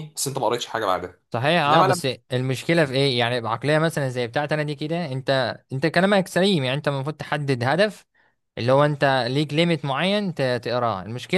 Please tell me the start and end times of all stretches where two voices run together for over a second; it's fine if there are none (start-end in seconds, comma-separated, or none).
none